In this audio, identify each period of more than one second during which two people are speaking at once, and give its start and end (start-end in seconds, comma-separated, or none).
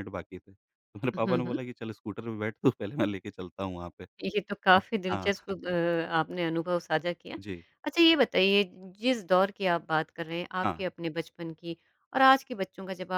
none